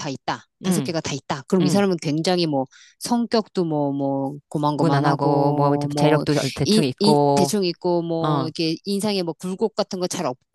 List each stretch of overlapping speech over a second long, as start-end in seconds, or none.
4.7-7.5